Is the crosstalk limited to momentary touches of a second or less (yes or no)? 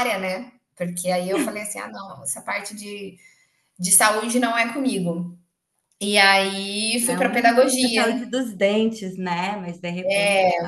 no